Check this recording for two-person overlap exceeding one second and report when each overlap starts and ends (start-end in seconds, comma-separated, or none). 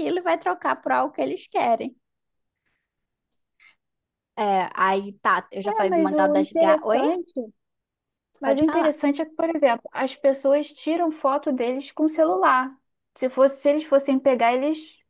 5.6-7.0